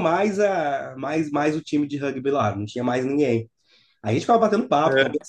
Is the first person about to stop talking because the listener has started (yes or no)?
no